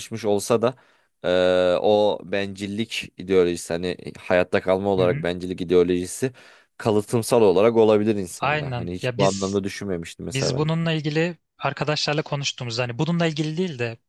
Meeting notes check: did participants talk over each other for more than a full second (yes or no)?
yes